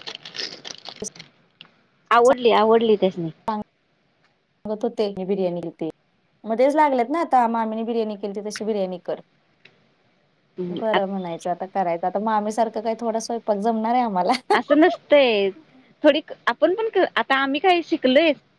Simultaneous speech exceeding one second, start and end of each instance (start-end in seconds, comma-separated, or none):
none